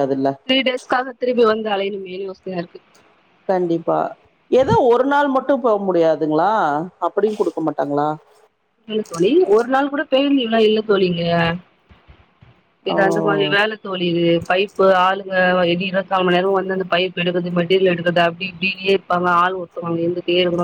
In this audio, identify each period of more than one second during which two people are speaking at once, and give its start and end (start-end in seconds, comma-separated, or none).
none